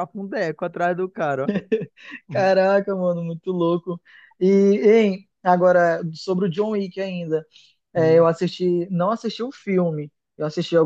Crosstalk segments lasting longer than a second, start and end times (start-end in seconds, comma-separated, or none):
none